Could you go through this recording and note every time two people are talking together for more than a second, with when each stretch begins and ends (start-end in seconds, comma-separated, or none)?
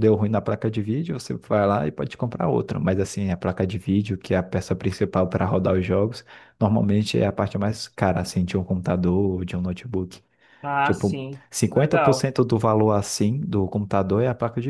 10.8-12.3